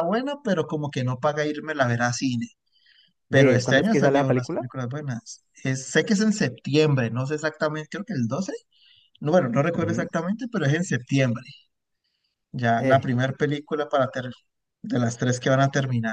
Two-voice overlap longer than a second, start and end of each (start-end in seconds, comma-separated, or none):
3.3-4.7